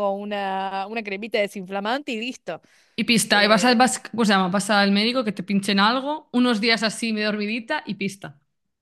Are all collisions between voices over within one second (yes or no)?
yes